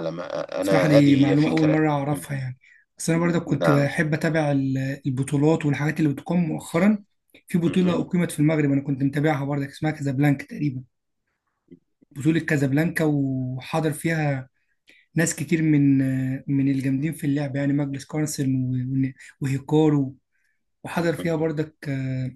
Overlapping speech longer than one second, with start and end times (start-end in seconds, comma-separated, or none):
0.6-2.2